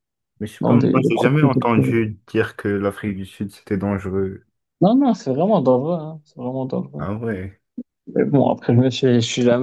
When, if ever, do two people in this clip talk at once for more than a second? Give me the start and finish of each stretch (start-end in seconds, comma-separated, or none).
0.6-2.0